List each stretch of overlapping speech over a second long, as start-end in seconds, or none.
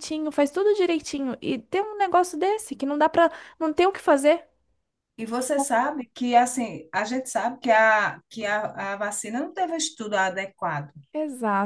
none